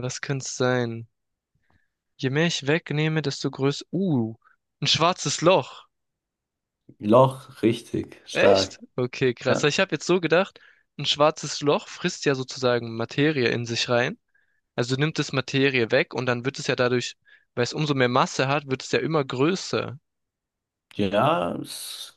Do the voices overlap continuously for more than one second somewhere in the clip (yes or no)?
no